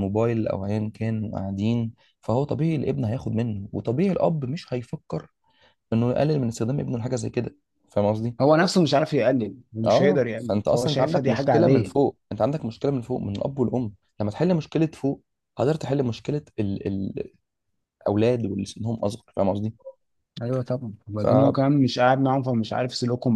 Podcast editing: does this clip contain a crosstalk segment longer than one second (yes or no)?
yes